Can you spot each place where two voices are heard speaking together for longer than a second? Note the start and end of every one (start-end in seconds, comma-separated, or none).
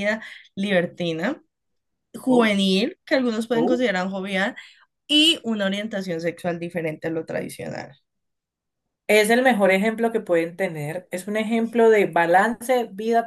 none